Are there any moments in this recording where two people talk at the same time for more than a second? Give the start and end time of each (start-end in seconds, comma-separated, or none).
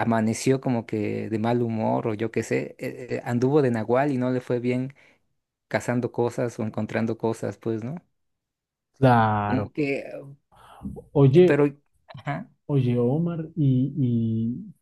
none